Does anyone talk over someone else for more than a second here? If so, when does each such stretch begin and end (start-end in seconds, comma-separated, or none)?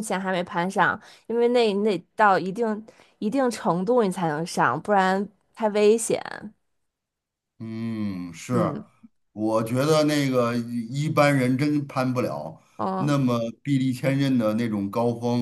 none